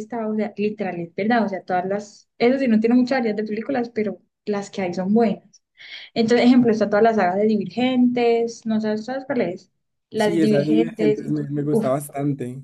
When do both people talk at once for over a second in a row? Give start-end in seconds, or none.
10.2-11.9